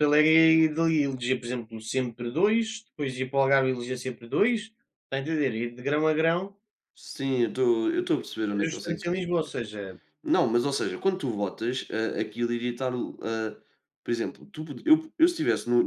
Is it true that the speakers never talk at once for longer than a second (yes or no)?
yes